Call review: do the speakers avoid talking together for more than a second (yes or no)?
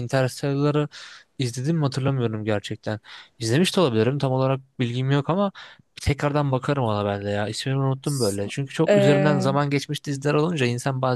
no